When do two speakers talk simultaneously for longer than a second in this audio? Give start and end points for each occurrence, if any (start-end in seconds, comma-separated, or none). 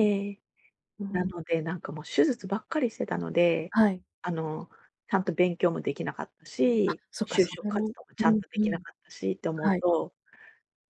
6.9-8.8